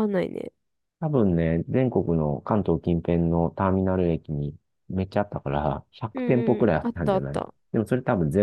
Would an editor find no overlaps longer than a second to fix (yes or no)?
no